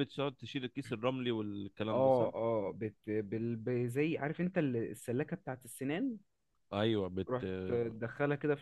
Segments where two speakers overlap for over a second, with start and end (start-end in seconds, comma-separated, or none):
none